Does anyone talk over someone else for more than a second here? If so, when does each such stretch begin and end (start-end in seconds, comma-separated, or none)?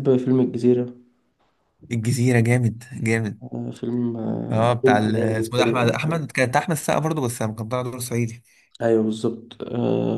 4.5-6.2